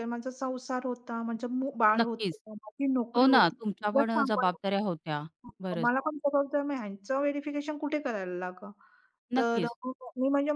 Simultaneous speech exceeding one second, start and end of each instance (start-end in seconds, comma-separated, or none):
3.1-4.6